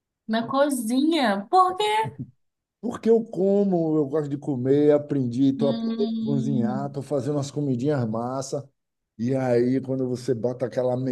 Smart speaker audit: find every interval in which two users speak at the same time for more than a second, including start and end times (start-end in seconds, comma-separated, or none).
5.6-7.0